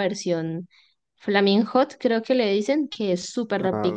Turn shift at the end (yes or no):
yes